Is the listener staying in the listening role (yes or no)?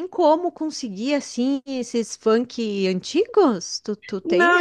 no